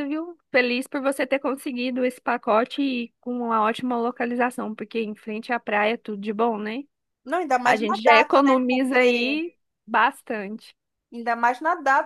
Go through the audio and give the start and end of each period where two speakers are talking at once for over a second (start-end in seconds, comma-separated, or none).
7.6-9.4